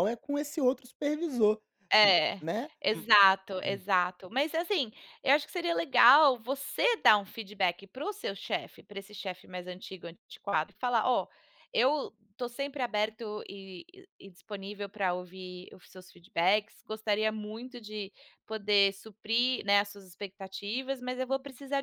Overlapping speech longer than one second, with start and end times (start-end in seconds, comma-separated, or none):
none